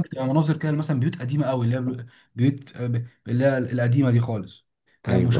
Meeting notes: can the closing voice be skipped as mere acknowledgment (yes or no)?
yes